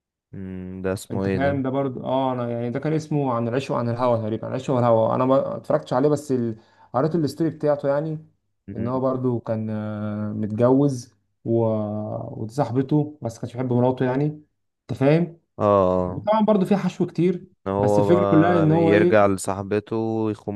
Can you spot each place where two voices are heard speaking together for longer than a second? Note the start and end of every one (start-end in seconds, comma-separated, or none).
17.5-19.3